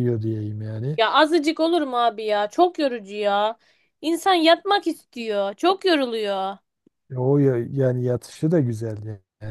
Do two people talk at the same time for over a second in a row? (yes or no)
no